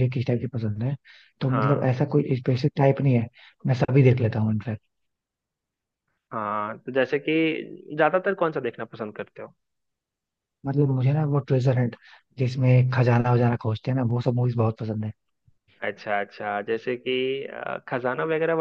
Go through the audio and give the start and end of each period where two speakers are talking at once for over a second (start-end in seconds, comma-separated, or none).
none